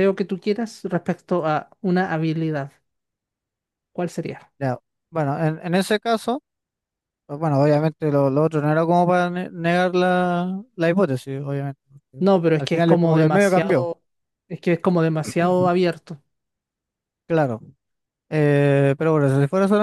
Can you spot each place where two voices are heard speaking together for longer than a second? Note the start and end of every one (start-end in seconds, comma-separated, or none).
12.2-13.9